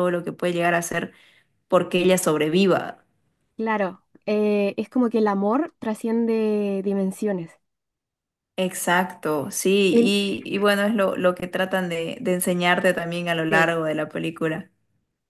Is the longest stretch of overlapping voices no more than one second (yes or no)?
yes